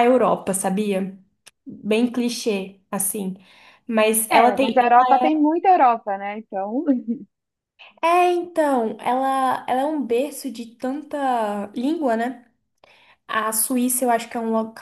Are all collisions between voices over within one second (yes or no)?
yes